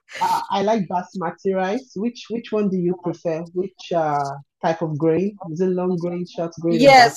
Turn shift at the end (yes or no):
yes